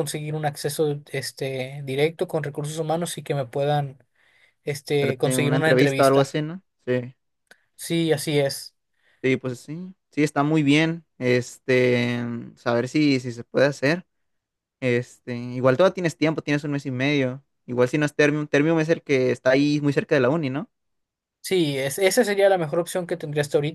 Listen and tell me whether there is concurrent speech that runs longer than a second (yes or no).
yes